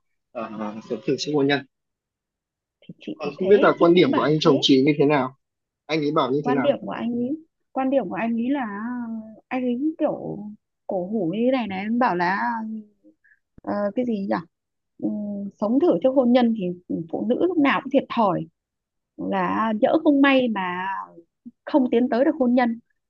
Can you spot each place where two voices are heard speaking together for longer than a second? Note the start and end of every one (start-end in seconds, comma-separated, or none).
3.1-4.7